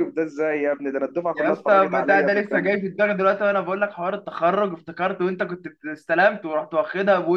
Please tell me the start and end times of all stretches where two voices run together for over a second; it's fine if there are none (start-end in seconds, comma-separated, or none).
1.3-2.8